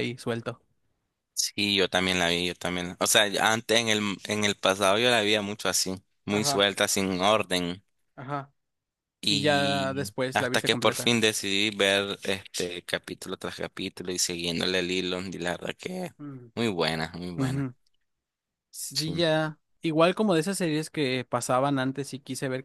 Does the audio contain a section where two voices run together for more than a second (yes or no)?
yes